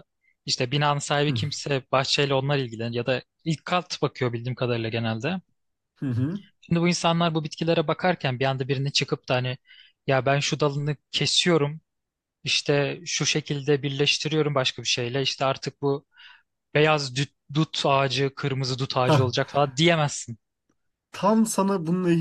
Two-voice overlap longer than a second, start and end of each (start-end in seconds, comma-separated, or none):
none